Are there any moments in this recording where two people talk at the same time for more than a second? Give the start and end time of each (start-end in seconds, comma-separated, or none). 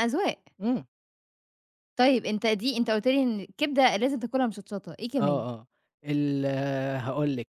none